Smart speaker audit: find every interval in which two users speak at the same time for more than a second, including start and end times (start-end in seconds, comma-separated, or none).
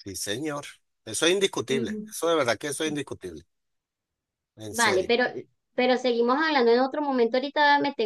none